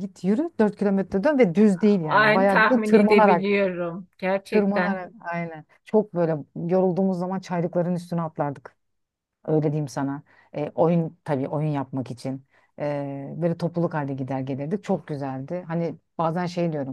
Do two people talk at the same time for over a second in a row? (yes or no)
yes